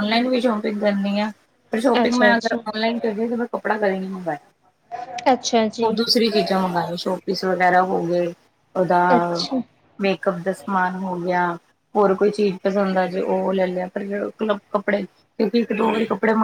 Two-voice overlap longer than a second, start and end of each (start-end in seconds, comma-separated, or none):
none